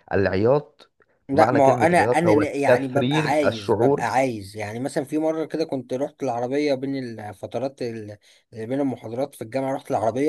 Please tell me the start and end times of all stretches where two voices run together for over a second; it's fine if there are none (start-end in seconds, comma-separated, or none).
1.3-4.1